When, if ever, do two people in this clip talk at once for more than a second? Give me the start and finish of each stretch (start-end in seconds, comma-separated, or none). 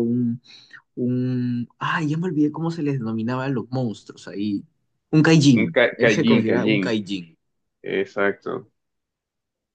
5.5-7.0